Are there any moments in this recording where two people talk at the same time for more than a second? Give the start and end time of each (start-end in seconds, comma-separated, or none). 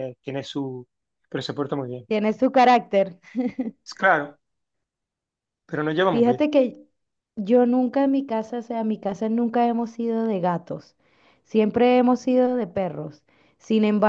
none